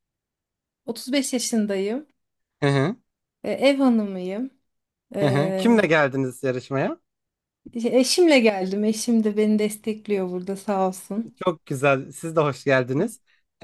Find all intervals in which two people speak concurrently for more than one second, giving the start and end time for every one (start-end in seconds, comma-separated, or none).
none